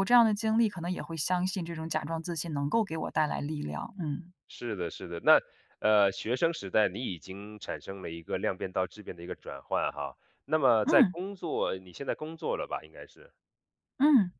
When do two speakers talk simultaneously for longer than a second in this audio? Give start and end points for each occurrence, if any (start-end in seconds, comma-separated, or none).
none